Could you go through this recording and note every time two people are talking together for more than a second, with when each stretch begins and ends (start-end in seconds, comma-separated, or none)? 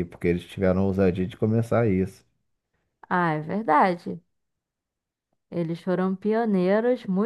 none